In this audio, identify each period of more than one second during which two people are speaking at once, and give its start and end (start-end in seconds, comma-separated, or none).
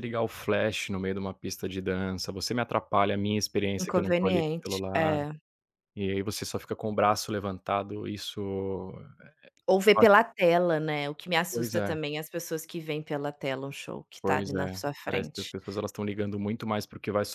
3.8-5.2, 14.2-15.5